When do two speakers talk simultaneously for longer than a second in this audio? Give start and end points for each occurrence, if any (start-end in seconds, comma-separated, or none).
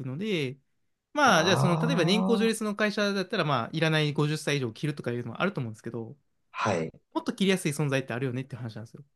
1.2-2.5